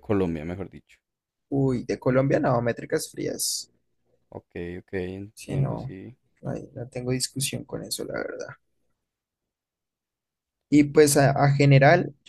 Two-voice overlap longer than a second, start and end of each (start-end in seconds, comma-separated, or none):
none